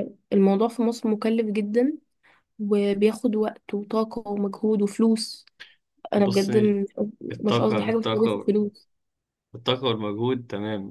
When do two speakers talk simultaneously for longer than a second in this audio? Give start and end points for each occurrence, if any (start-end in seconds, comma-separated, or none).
7.3-8.6